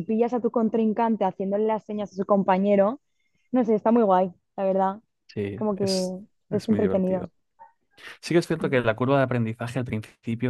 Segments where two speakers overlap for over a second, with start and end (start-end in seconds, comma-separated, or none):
5.5-7.3